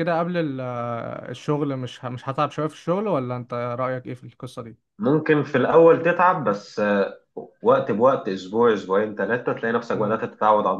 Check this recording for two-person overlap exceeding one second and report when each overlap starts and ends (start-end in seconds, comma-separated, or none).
none